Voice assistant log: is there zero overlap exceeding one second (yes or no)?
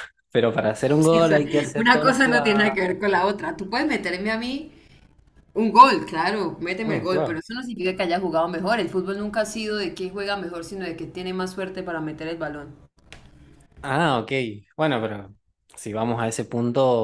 no